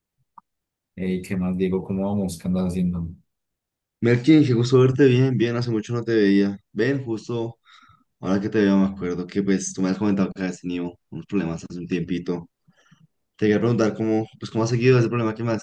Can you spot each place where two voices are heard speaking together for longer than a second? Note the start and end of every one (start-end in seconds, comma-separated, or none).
none